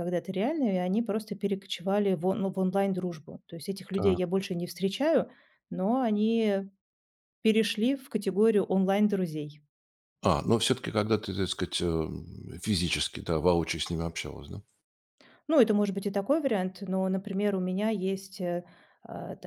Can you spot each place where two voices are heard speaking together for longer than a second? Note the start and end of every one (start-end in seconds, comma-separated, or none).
none